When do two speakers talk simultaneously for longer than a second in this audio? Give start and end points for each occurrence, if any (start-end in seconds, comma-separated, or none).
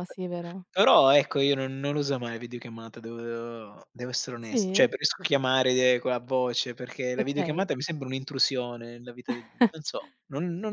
none